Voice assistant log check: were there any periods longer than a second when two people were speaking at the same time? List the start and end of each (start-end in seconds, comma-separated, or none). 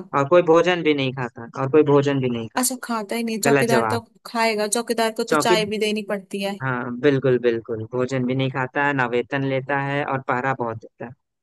none